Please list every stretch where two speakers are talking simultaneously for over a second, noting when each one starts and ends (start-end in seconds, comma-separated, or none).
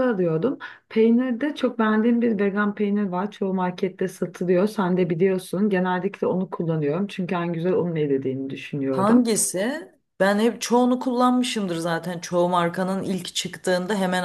none